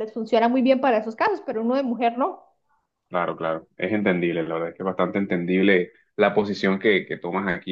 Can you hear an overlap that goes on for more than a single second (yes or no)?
no